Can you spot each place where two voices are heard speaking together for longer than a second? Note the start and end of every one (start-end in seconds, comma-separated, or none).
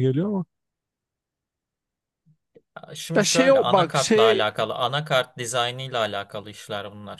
3.2-4.5